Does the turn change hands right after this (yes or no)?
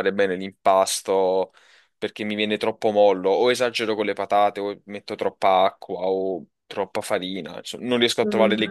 yes